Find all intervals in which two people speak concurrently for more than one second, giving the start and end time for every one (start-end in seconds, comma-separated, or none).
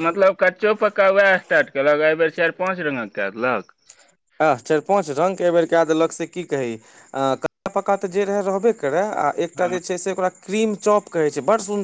none